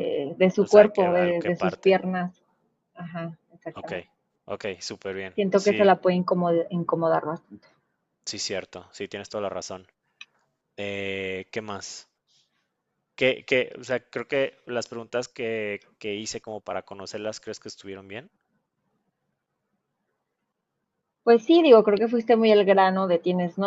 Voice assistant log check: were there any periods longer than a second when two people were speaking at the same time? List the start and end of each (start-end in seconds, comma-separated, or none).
0.6-2.0